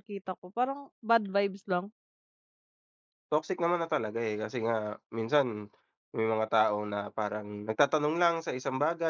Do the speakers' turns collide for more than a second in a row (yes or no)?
no